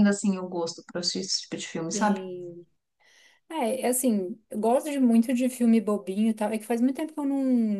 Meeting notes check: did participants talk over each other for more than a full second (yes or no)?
no